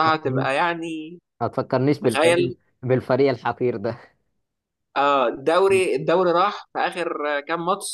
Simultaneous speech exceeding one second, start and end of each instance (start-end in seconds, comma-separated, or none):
none